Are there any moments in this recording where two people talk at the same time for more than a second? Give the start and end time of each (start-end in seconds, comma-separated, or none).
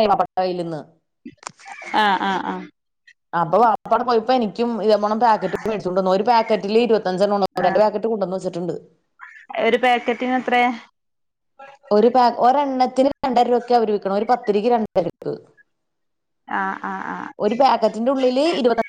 none